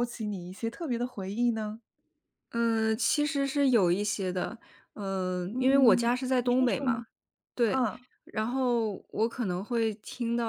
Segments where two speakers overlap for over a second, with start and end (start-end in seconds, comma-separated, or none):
5.5-7.0